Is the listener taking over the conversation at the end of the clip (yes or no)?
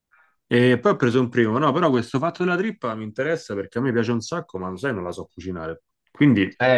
yes